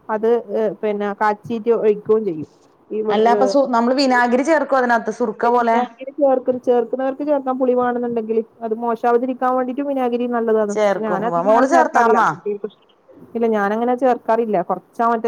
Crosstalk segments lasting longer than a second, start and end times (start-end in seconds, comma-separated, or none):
10.7-12.3